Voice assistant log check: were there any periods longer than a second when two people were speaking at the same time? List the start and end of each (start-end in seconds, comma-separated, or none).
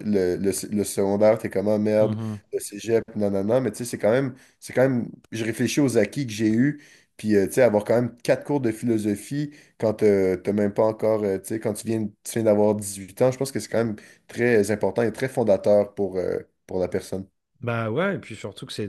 none